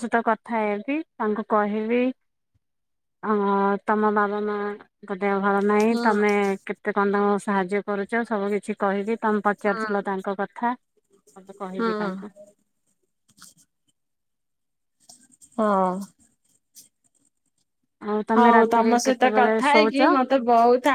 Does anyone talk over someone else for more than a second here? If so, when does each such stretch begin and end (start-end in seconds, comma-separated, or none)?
18.4-20.0